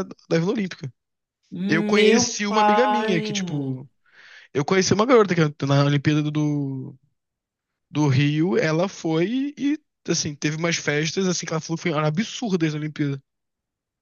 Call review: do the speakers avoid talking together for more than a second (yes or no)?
no